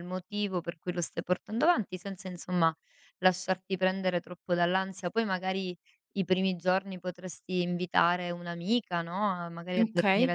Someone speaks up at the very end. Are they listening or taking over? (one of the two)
listening